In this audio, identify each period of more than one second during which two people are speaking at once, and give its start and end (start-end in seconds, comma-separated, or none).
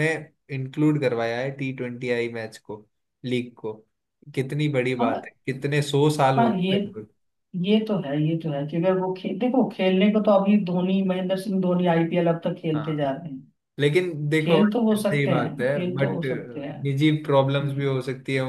14.4-16.2